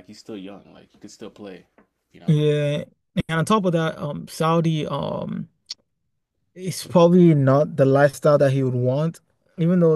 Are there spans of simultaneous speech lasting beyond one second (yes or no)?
no